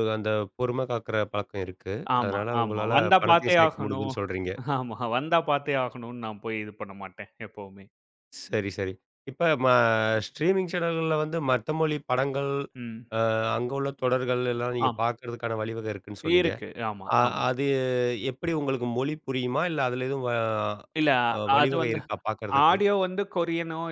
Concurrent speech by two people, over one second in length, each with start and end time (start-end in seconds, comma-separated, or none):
2.2-4.1